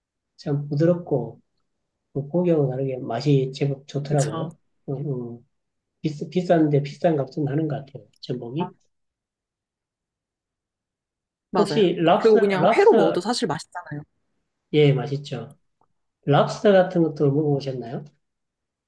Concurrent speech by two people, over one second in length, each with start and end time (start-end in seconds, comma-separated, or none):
11.6-13.2